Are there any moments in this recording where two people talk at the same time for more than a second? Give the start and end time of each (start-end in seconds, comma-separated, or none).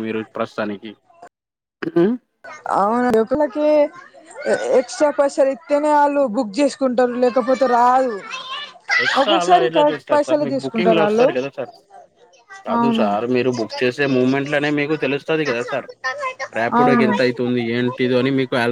9.2-11.3